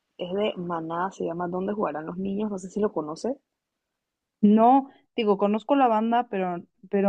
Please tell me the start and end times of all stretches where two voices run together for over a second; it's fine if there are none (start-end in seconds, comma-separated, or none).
none